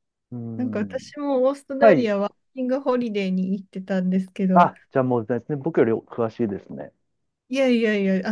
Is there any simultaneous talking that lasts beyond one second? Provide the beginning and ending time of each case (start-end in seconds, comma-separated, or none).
none